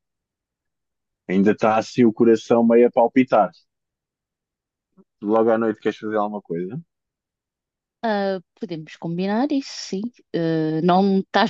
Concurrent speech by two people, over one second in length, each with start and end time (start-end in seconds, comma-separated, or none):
none